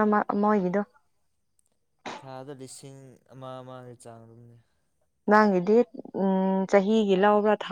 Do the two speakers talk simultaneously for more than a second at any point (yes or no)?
no